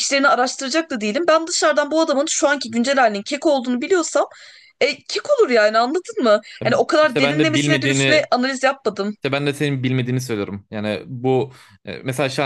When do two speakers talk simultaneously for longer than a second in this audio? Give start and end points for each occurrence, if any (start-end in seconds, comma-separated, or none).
7.0-8.3